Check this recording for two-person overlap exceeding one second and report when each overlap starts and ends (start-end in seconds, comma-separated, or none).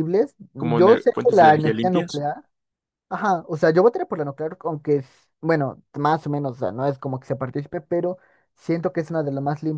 0.6-2.2